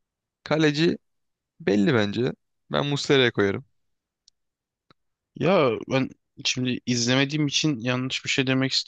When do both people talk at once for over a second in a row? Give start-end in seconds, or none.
none